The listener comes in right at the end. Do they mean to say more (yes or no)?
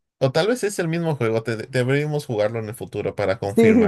yes